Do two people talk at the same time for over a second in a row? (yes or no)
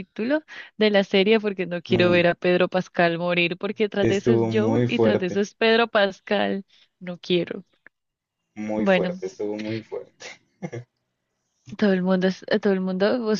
yes